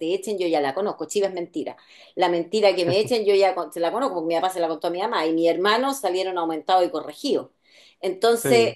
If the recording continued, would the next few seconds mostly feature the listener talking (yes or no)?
no